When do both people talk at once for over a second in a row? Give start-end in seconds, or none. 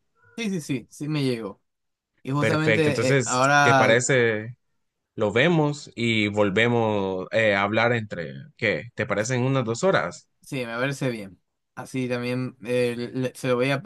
2.4-4.0